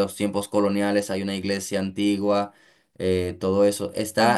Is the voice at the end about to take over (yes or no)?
no